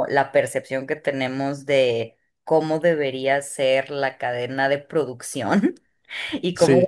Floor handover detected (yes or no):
no